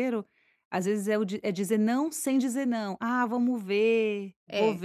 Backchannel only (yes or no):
yes